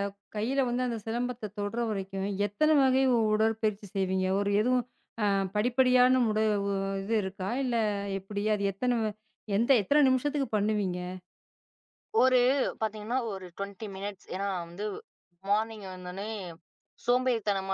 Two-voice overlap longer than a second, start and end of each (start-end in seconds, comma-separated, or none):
none